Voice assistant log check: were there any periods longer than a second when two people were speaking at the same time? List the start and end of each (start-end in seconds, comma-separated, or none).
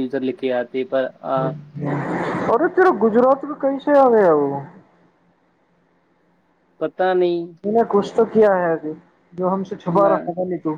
none